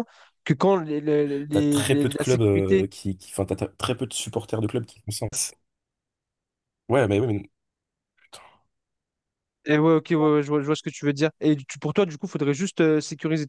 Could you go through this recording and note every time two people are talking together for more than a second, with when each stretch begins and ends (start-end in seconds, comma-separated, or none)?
1.5-2.9